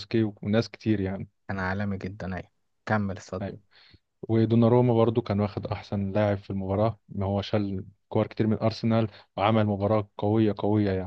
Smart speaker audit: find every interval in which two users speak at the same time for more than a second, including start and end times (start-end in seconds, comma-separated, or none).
none